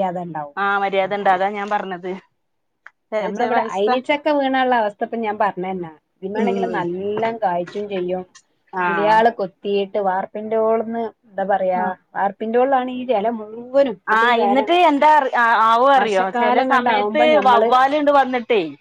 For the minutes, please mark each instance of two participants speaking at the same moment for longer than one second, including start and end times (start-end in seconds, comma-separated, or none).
16.0-17.7